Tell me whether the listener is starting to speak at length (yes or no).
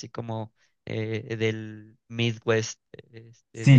yes